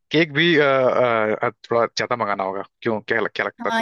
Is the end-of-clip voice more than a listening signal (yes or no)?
yes